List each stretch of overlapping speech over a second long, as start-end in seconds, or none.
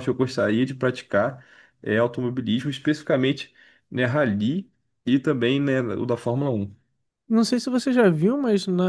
none